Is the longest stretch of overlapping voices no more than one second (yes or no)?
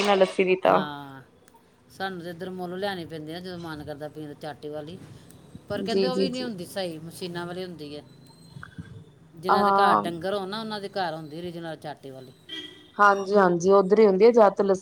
yes